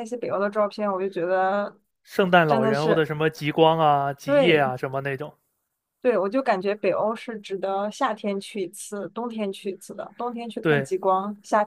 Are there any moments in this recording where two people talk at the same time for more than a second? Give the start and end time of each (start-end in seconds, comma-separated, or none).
none